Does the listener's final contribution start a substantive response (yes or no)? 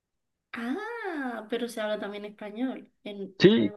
yes